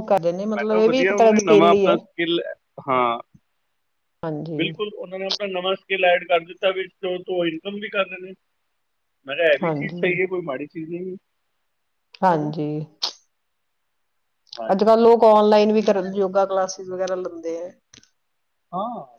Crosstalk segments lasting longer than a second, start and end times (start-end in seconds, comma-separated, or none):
0.6-1.9